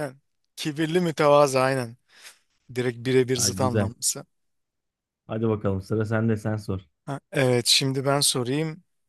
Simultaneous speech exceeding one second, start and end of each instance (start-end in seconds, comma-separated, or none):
none